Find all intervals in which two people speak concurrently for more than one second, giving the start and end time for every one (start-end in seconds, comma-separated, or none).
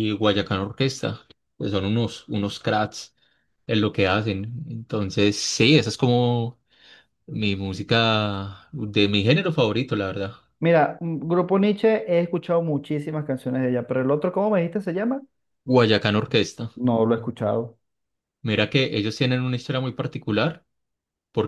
none